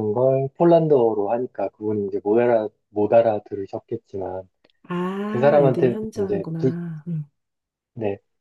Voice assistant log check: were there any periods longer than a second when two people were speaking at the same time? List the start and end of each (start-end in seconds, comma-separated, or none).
5.3-6.7